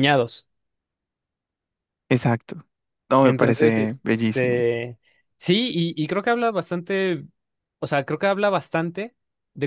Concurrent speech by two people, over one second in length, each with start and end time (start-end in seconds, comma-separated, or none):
3.2-4.7